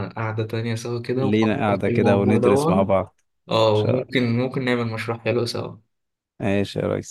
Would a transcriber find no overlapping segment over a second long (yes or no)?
no